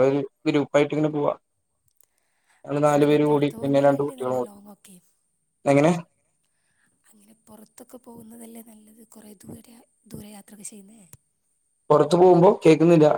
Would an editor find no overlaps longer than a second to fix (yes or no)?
no